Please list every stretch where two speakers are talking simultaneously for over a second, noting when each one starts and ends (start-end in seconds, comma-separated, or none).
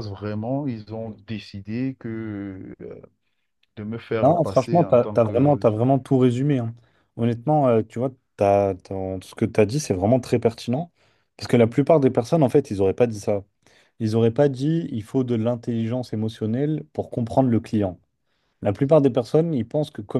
4.2-5.6